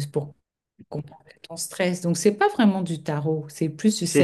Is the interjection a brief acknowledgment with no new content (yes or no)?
no